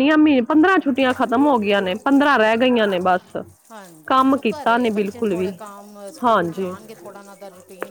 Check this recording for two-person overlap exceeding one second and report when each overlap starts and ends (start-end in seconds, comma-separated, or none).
4.1-5.5